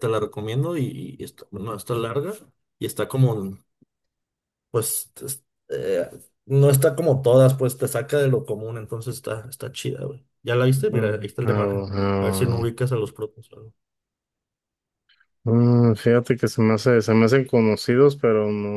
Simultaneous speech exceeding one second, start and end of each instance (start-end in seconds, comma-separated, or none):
10.8-12.7